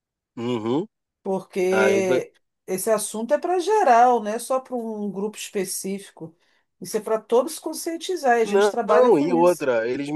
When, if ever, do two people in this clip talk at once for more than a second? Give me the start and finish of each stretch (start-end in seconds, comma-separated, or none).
8.4-9.7